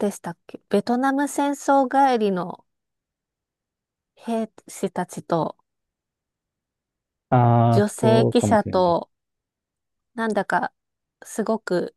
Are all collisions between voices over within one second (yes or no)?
no